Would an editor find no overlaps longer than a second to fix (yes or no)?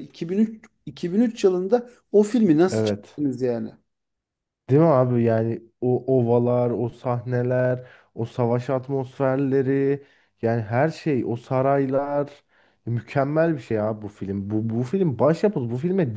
yes